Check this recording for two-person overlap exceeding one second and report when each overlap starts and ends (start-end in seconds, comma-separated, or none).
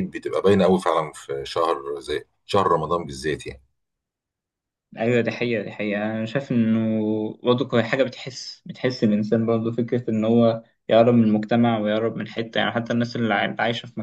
none